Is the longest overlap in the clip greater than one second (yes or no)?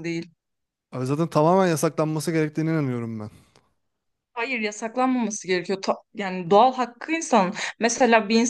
no